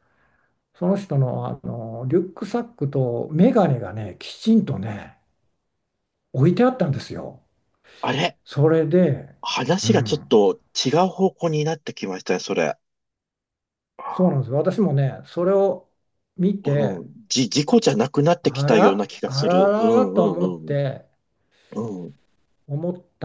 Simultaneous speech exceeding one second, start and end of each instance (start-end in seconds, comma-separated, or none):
18.4-20.8